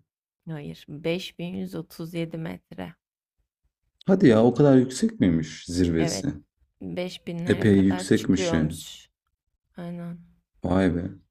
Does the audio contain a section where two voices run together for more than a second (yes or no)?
yes